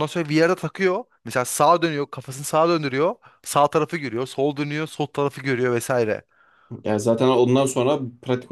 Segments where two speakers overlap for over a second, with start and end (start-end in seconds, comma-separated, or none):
none